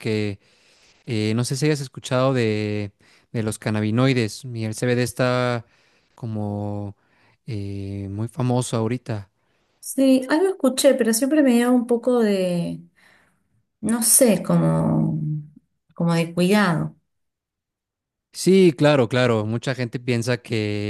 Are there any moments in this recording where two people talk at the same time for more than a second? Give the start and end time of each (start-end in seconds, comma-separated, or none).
none